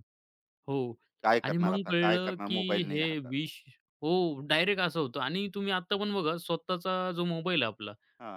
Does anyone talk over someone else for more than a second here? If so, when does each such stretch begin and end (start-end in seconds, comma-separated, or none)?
1.4-3.3